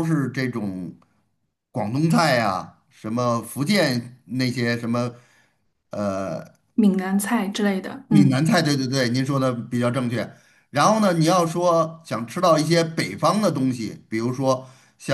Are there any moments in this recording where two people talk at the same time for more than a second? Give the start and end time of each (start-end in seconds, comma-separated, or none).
none